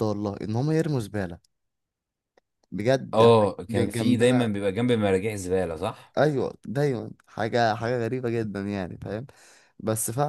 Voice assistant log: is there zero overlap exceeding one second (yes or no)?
no